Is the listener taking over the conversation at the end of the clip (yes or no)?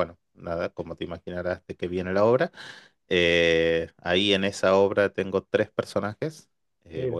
no